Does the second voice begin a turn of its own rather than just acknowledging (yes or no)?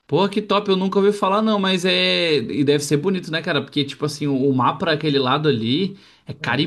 no